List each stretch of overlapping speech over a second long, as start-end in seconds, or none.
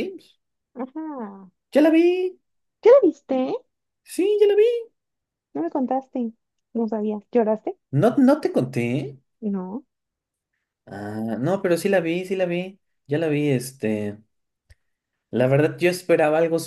none